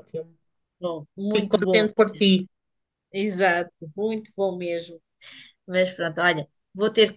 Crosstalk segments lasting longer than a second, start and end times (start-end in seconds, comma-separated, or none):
none